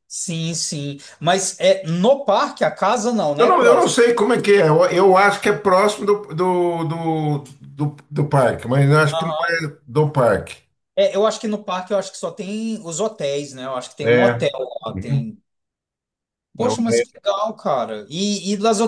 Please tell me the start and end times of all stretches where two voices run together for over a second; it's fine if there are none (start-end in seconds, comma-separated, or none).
none